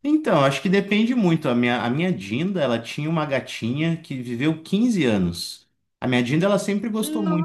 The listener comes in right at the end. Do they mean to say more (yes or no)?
no